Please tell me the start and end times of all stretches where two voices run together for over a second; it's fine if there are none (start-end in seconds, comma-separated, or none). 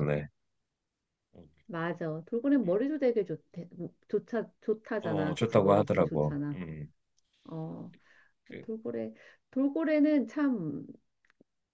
5.0-6.6